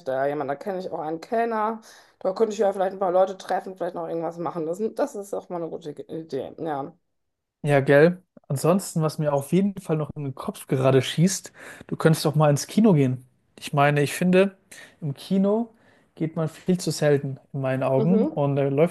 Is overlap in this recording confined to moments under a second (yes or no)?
yes